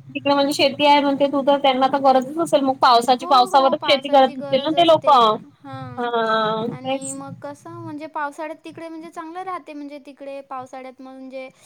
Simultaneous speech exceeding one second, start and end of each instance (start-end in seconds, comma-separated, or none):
3.1-6.1